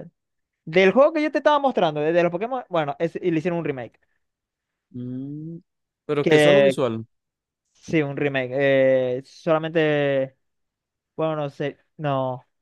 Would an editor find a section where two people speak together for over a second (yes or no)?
no